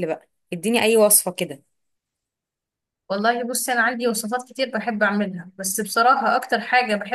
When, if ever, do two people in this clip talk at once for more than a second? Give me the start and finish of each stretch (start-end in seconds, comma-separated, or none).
none